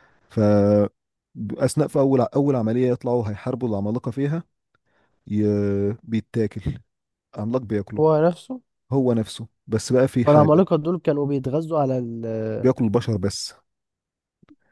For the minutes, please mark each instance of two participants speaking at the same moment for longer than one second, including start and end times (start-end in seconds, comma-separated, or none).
none